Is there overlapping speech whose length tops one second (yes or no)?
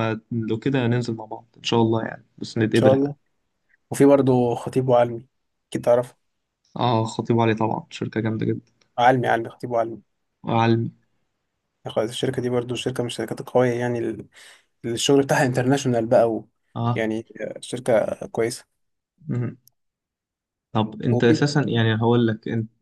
no